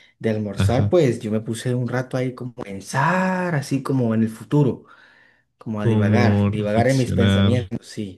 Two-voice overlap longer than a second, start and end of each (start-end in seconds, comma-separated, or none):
5.8-7.5